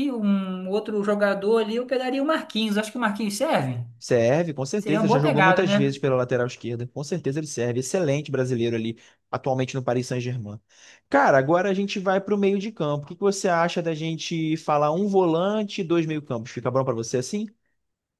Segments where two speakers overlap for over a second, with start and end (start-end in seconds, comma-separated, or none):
4.8-6.0